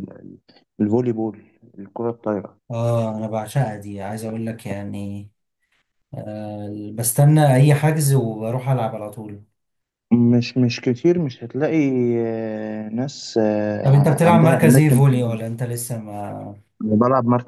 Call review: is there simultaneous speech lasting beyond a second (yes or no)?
yes